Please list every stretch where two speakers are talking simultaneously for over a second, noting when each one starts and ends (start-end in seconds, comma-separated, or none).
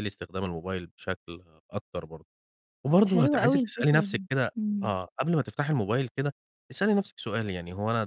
3.0-4.9